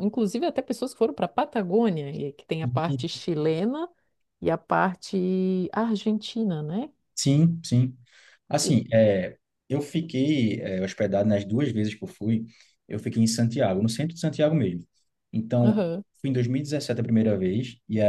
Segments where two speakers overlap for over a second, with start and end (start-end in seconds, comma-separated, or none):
none